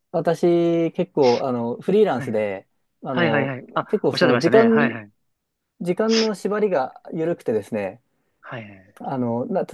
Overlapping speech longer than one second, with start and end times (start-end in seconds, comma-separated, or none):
3.1-5.0